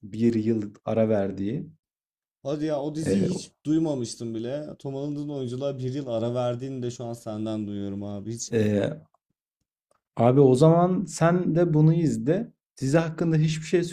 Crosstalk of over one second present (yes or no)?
no